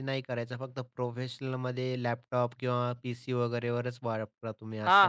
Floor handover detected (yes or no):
yes